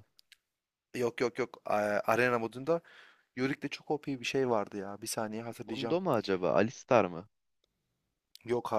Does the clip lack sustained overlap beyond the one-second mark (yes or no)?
yes